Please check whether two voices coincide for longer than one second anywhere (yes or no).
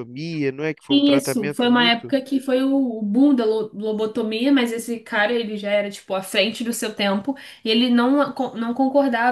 yes